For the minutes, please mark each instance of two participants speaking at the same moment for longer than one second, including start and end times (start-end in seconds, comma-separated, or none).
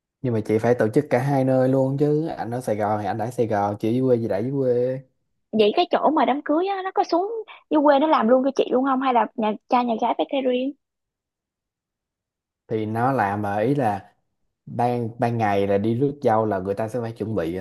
none